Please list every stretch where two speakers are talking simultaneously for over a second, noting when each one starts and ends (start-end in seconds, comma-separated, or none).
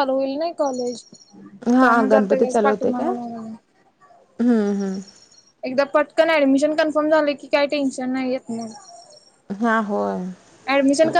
1.8-3.1